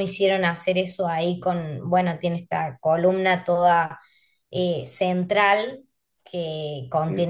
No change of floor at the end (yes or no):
yes